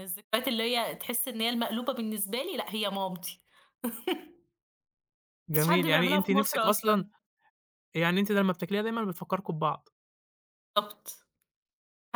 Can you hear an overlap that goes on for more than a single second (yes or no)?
yes